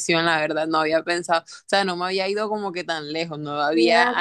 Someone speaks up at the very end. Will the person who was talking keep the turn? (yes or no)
no